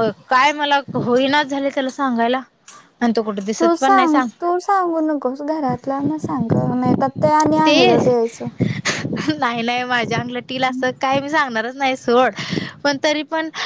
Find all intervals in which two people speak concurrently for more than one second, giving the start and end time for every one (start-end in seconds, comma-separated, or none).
none